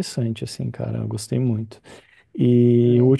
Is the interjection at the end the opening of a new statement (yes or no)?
no